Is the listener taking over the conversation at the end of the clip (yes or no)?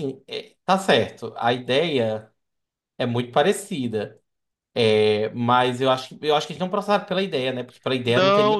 yes